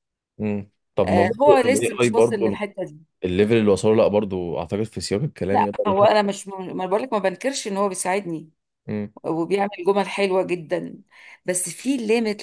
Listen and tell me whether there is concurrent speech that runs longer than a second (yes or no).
yes